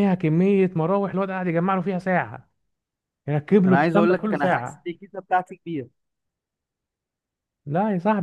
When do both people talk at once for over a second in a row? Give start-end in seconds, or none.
3.6-4.9